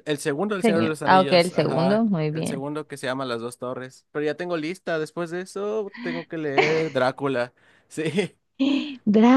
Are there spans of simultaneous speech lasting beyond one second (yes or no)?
yes